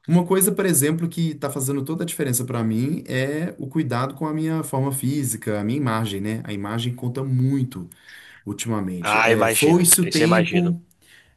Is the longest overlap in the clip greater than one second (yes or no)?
yes